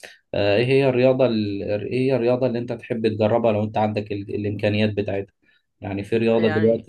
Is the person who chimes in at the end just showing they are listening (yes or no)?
yes